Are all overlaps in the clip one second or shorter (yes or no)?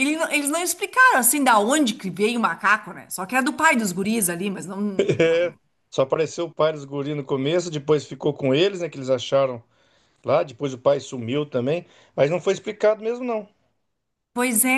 yes